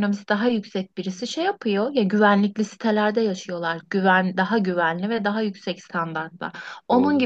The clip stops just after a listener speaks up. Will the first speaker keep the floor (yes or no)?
yes